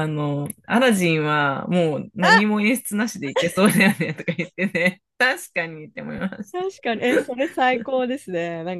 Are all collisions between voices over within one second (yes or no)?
yes